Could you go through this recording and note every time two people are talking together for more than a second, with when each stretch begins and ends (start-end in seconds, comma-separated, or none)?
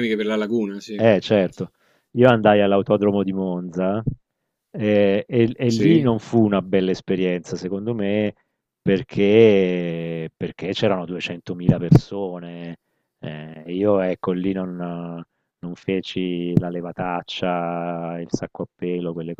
none